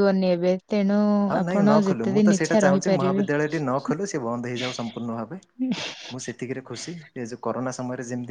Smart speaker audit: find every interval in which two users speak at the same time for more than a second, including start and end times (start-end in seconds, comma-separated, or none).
1.4-3.2